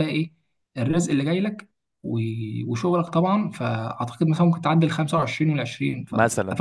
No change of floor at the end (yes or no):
no